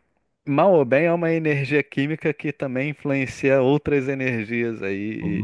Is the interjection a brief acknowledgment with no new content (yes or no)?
no